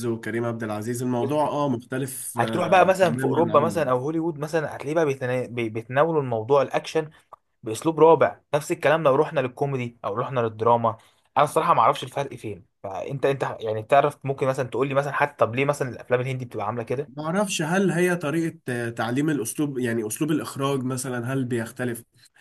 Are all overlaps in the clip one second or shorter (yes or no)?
no